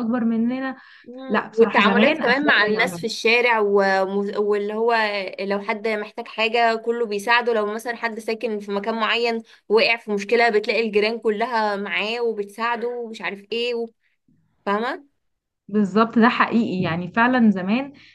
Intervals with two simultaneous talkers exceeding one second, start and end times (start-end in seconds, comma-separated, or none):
1.3-3.0